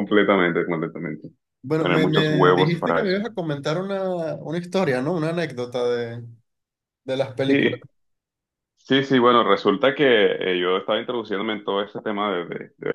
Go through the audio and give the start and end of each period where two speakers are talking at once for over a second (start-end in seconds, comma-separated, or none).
1.8-3.2